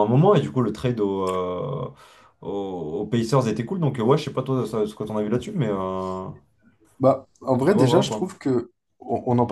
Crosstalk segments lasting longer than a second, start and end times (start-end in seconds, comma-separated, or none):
none